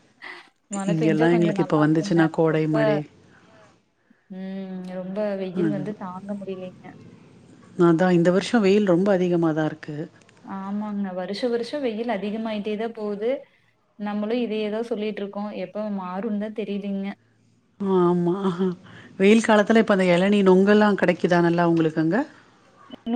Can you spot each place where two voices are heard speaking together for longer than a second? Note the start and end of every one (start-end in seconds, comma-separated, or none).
0.9-2.7